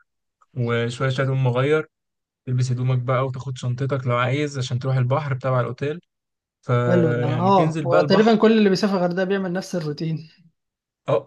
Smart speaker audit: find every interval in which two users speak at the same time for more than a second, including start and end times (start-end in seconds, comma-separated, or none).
6.9-8.4